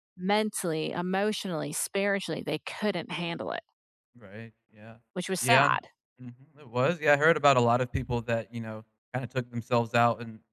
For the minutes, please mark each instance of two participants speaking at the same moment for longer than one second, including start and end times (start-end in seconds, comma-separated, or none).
none